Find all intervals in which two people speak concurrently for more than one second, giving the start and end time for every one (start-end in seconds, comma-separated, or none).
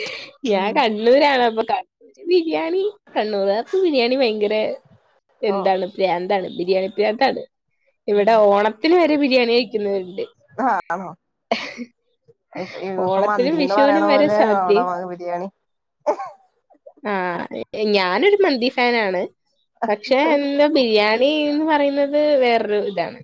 13.1-14.8